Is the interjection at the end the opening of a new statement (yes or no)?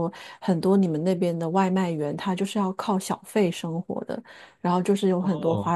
no